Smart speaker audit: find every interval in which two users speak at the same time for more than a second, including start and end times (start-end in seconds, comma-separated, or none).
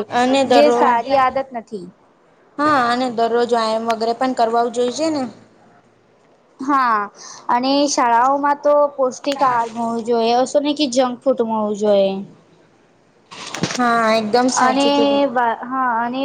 none